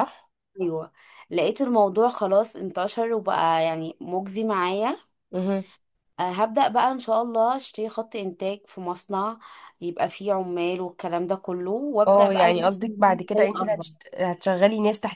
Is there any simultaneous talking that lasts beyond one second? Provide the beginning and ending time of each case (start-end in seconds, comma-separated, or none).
12.1-13.8